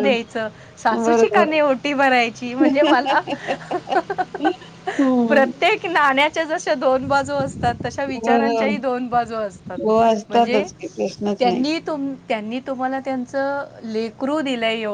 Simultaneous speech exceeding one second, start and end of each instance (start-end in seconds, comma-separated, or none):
none